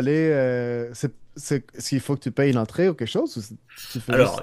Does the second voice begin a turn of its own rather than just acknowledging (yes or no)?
yes